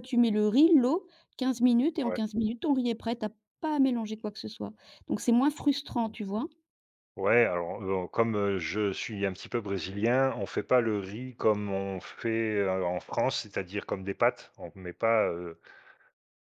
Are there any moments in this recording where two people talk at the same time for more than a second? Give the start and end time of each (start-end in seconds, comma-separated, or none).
none